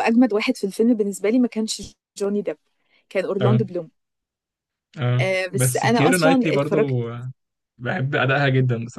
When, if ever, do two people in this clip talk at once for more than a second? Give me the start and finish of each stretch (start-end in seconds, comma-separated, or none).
5.2-6.8